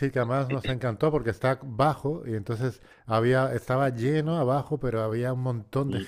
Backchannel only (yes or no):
yes